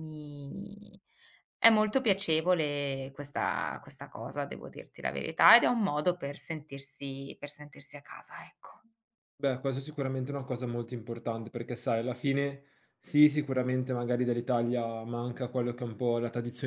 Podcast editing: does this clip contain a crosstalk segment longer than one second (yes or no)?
no